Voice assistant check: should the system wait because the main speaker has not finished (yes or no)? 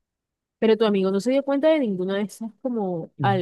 no